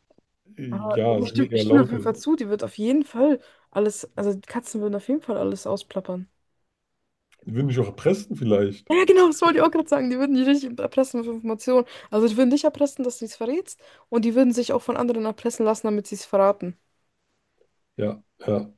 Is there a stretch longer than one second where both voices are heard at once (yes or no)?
yes